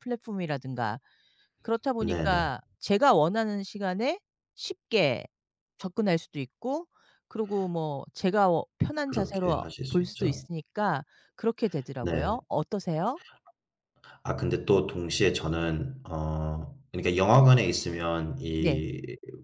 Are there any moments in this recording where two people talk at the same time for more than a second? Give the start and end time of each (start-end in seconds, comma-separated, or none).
9.1-10.4